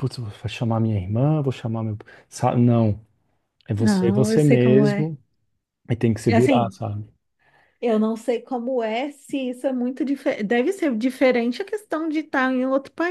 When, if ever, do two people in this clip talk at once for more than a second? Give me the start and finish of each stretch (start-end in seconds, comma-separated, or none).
3.8-5.1